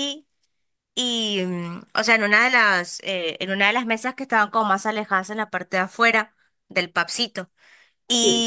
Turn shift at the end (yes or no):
no